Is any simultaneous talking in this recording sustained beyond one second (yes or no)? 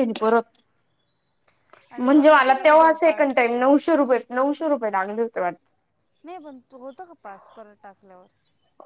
yes